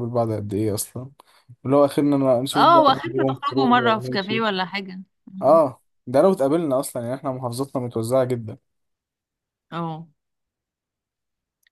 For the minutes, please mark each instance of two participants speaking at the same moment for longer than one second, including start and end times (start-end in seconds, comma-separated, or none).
2.5-4.4